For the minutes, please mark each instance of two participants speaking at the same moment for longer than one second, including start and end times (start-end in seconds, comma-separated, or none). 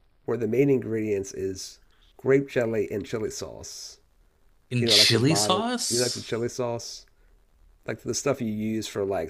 4.8-6.3